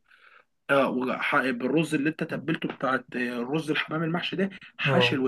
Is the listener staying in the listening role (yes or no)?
yes